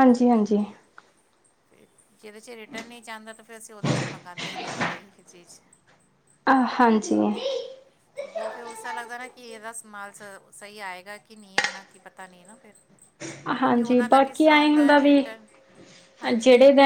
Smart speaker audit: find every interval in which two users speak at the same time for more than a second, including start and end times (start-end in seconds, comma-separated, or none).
none